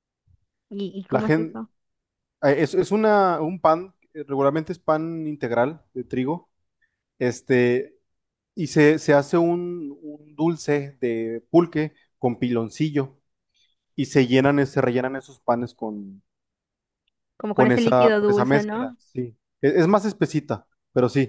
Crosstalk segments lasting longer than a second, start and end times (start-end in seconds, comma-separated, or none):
17.5-19.0